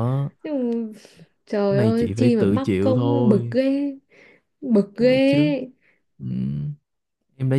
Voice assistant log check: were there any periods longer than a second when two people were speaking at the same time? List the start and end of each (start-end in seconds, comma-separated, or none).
1.7-3.5